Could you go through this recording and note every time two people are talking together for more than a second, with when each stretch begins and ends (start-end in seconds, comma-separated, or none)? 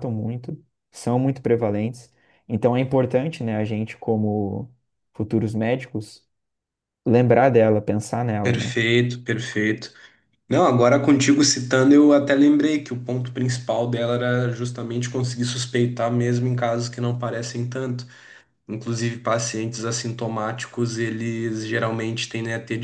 none